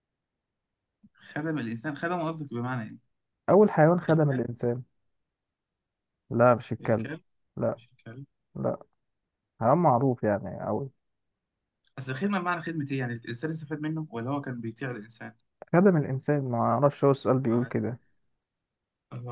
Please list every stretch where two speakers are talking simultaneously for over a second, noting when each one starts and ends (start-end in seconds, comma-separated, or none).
none